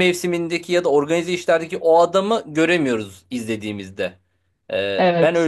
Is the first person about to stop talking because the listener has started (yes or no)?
yes